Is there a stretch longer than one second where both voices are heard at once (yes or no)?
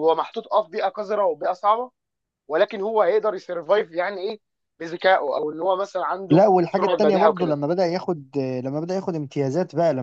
yes